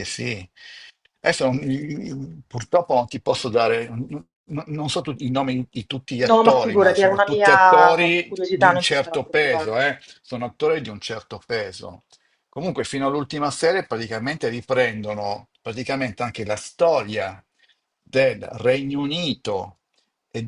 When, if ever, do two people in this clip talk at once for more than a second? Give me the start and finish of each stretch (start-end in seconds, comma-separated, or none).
6.3-9.8